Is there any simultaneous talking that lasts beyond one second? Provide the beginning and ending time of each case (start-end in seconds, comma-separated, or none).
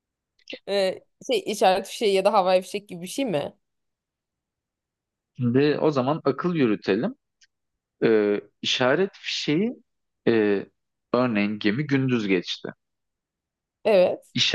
none